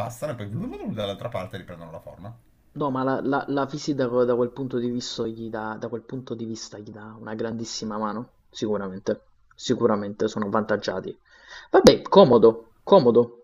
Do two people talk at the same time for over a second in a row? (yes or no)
no